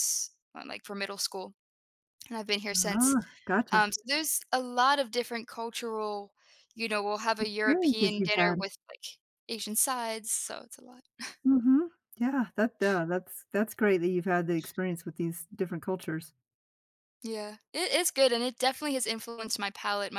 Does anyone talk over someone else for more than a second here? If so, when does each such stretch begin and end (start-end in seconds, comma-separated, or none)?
7.4-8.6